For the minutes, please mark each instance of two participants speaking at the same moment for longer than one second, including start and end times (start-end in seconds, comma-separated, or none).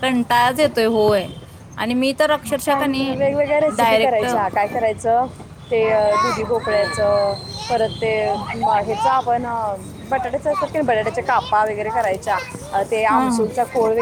none